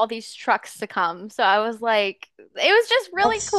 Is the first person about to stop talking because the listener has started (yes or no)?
no